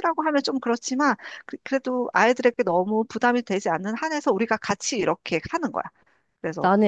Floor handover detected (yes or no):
yes